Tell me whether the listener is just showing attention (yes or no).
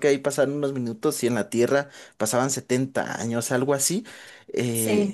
no